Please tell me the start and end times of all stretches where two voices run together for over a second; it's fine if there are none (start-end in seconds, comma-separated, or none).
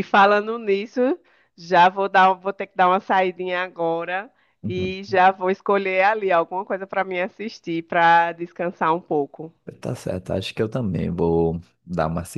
none